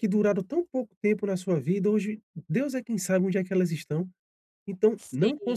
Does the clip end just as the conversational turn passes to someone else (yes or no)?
no